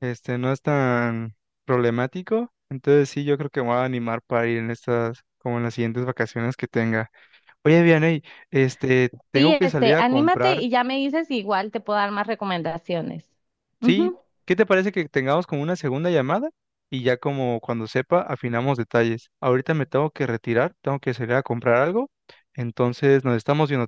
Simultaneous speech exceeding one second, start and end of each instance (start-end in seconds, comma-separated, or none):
9.3-10.7